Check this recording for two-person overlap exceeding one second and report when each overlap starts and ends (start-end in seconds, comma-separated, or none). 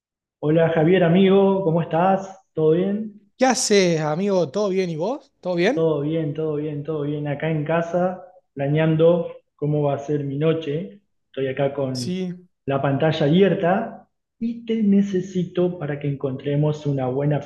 none